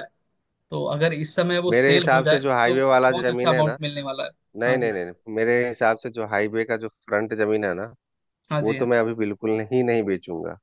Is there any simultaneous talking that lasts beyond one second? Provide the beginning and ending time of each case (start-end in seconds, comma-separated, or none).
1.7-3.8